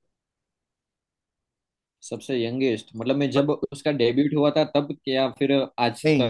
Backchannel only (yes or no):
no